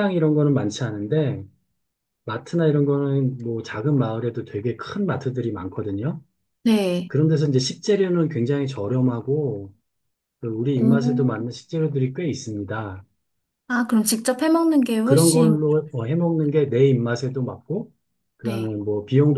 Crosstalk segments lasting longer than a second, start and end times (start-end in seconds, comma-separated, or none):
none